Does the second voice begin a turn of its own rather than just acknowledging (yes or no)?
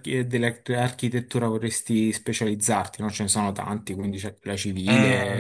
yes